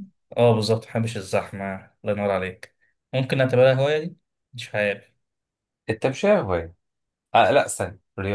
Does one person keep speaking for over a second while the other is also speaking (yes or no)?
no